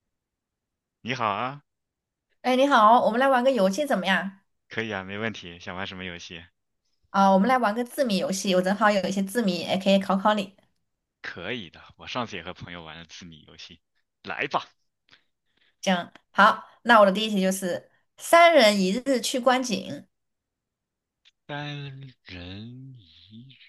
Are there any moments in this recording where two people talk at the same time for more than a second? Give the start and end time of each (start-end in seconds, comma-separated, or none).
none